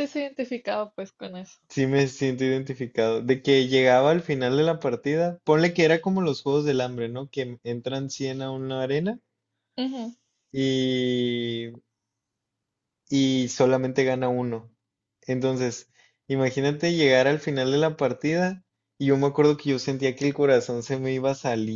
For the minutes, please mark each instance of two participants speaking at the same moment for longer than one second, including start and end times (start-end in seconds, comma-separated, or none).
none